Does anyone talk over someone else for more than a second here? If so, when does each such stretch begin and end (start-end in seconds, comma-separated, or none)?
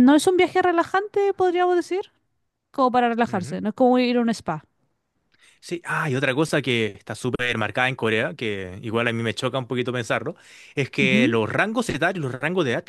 none